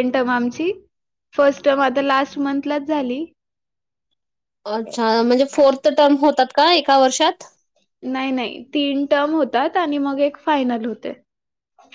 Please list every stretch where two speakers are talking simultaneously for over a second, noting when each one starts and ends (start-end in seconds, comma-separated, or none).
none